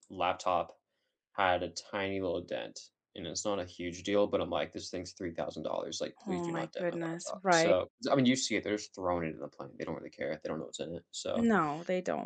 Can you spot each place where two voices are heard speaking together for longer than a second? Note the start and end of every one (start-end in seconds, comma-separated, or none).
6.3-7.8